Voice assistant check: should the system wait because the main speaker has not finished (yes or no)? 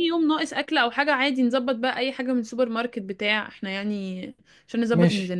no